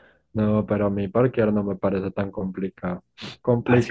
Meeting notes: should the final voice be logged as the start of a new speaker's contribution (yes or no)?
no